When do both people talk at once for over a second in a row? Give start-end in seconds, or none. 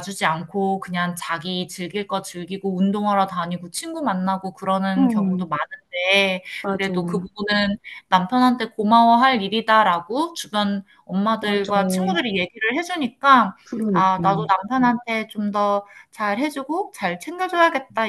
none